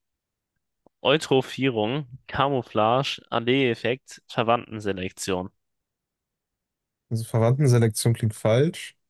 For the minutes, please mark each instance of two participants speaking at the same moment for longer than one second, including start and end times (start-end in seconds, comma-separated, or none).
none